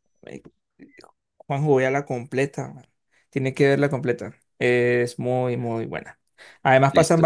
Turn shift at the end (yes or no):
no